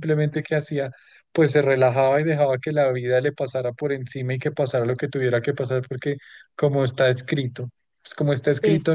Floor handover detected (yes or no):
no